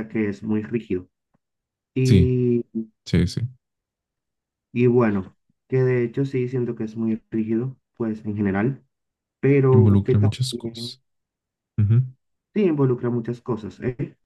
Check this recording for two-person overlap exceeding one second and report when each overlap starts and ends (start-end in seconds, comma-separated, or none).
9.7-11.0